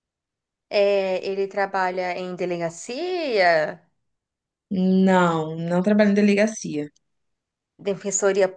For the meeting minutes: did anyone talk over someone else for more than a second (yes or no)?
no